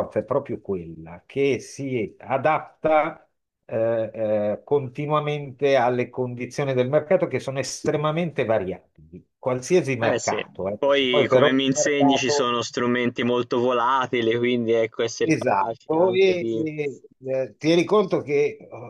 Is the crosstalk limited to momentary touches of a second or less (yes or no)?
no